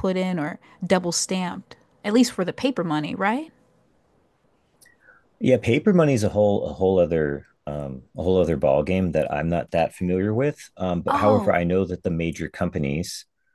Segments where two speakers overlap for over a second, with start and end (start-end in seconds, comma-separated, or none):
none